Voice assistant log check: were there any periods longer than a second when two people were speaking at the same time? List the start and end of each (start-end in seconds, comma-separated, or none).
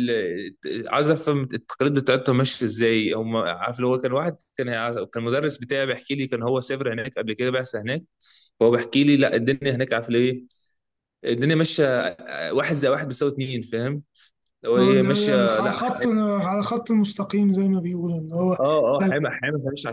14.8-16.1